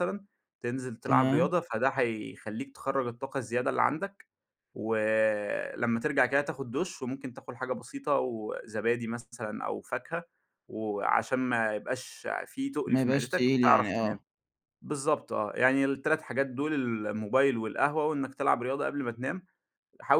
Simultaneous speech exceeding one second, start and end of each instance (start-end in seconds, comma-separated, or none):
12.9-14.2